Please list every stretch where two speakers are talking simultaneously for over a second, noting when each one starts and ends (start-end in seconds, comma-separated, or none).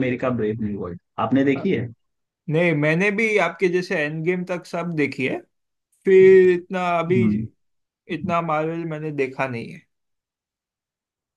none